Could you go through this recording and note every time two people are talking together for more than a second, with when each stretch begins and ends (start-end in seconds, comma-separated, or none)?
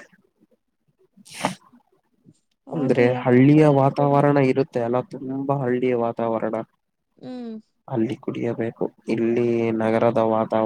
2.8-4.3